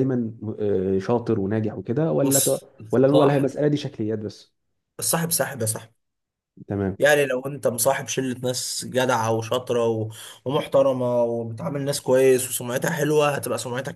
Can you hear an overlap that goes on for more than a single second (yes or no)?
yes